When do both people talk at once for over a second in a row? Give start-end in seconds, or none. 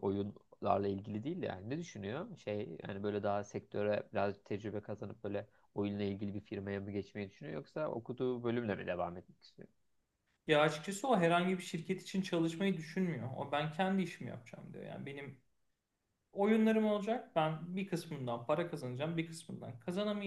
none